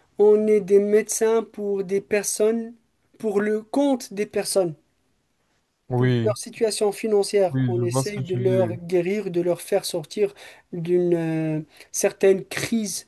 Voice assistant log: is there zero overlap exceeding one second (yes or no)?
no